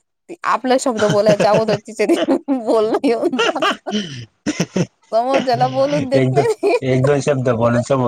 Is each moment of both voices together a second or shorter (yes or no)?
yes